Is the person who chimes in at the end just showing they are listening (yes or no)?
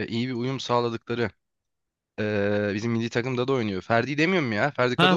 no